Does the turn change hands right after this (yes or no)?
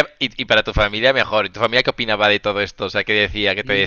yes